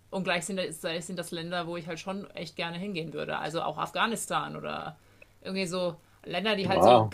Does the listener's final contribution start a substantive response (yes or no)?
no